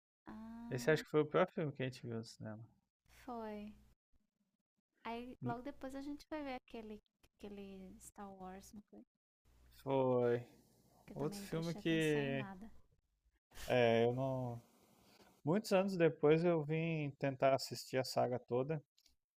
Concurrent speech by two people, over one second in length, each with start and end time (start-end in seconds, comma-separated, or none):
11.1-12.4